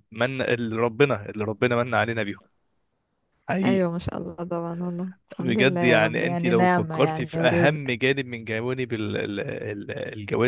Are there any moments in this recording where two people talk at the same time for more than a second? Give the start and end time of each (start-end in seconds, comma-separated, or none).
5.4-7.8